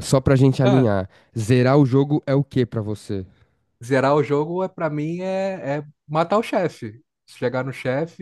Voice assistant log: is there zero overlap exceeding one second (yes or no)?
yes